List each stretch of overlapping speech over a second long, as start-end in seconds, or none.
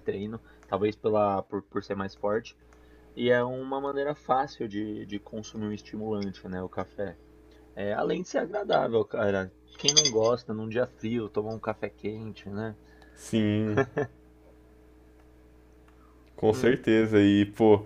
none